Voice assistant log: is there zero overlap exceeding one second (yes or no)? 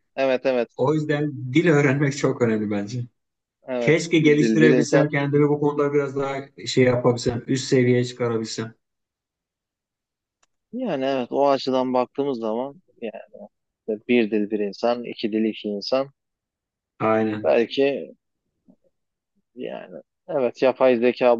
no